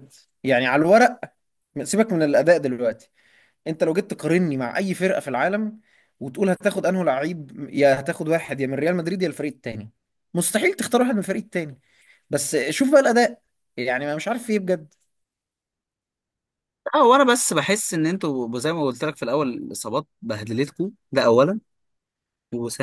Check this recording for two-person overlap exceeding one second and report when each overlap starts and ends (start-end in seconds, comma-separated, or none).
none